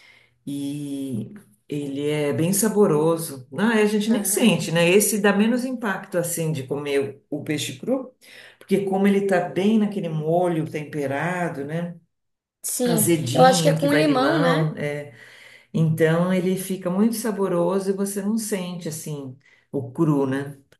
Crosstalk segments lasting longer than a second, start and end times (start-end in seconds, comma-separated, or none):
12.8-14.7